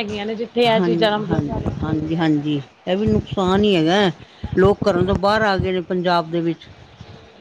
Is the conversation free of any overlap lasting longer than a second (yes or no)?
no